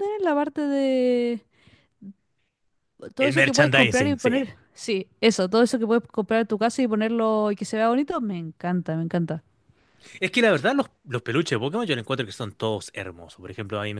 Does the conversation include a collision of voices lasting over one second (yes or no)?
yes